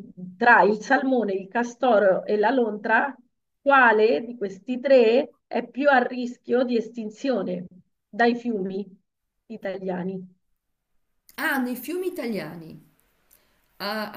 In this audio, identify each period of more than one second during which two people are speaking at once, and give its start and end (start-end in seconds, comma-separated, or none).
none